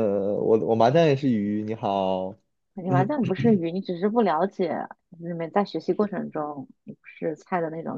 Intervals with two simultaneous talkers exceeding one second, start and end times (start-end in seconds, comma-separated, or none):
none